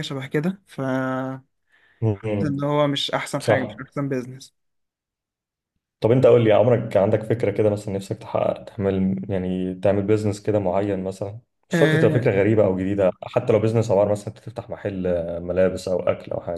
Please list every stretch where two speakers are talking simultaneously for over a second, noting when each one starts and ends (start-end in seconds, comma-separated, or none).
none